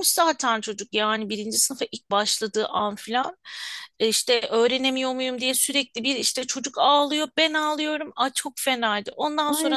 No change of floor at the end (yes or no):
no